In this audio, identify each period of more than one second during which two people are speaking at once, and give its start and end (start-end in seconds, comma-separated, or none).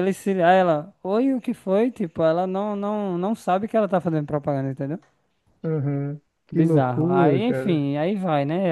6.5-7.9